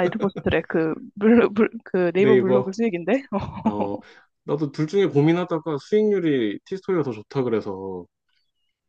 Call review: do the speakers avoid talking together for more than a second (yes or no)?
yes